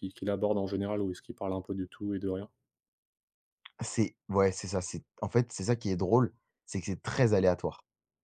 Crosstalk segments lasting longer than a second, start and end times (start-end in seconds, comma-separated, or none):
none